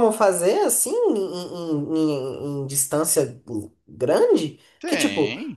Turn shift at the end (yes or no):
no